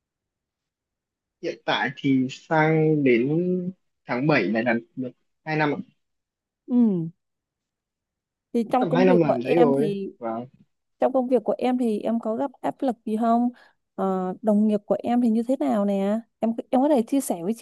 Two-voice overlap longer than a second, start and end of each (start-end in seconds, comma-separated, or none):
8.8-10.1